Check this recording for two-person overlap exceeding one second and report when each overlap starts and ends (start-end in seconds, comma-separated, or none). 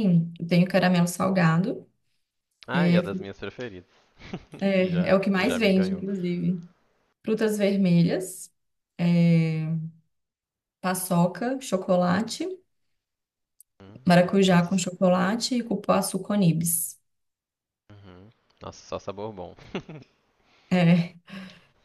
4.8-6.0